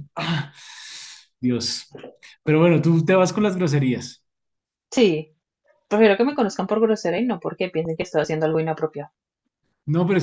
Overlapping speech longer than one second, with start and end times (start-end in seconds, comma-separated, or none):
none